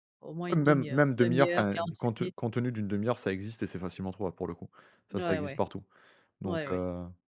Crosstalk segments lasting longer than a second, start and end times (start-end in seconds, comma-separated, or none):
0.5-2.3